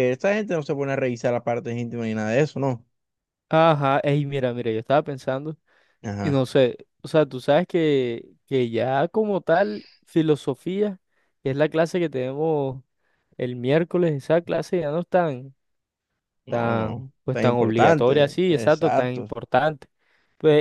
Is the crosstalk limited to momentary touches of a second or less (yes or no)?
no